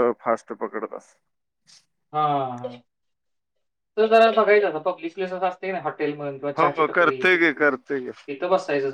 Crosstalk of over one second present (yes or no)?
no